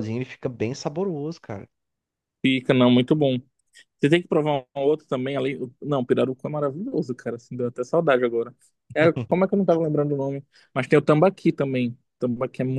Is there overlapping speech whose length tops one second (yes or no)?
no